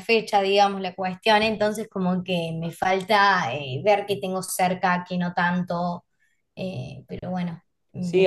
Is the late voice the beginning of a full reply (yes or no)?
yes